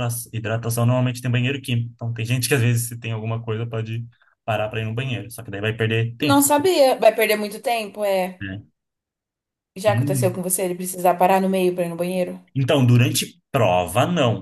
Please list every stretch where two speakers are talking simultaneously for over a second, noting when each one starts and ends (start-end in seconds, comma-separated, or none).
none